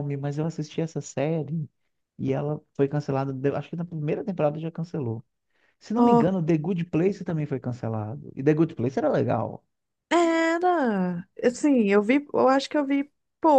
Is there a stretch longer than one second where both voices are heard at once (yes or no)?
no